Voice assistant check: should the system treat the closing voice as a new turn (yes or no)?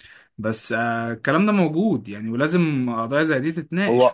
yes